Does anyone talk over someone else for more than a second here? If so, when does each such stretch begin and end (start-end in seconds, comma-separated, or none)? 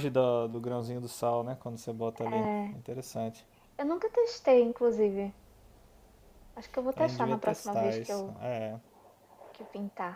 7.0-8.3